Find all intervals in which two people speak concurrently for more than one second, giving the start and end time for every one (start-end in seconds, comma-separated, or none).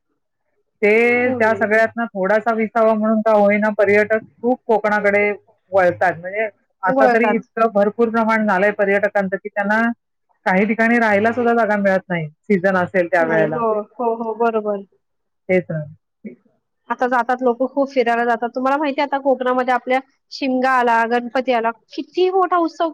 none